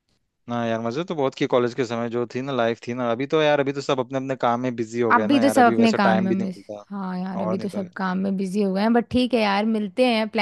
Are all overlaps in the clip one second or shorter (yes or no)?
no